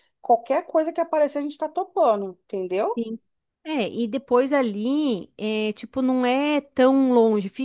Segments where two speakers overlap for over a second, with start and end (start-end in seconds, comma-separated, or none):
none